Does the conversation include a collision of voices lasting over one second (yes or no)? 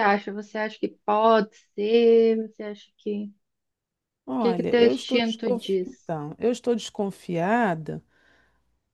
yes